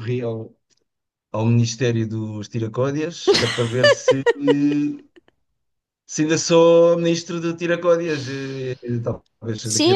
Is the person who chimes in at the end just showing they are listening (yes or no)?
no